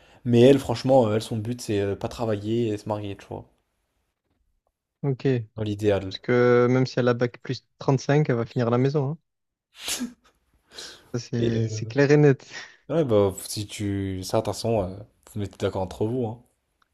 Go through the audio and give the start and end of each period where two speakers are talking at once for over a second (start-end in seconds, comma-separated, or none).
none